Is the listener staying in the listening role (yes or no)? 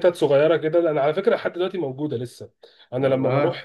yes